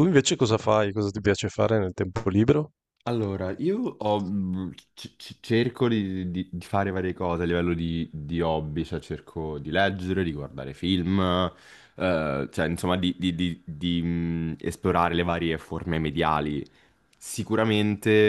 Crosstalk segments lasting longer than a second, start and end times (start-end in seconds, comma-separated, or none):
none